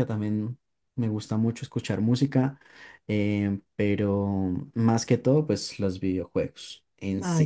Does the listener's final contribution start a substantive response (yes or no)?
yes